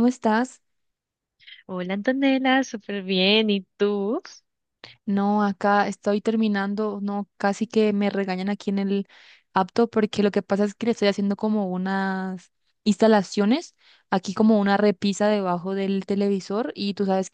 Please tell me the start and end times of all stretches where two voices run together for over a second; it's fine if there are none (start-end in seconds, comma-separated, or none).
none